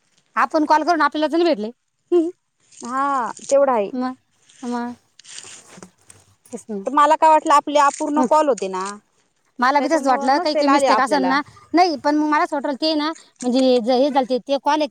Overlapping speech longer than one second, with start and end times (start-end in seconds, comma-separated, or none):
9.8-11.3